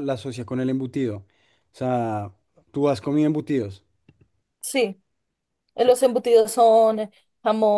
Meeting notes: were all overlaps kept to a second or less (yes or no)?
yes